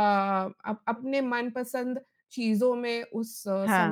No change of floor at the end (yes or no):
yes